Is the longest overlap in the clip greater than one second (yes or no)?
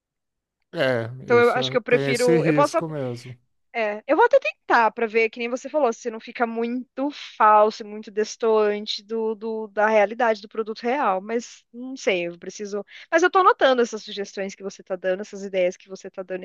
yes